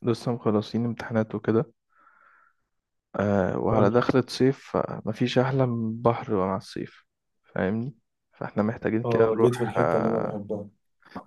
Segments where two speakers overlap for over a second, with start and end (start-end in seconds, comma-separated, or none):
9.1-10.4